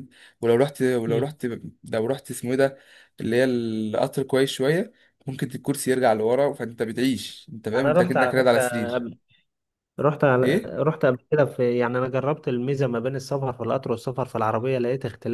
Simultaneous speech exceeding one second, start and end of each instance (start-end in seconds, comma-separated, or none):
7.7-9.0